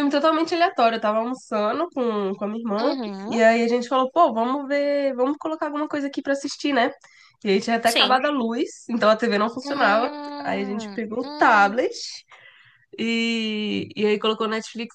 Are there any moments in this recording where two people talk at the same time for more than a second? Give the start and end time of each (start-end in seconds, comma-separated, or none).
9.6-11.8